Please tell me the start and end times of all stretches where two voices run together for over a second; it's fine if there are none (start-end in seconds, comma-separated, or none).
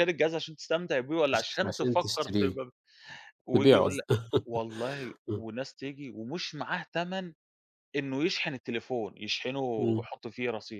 1.3-2.6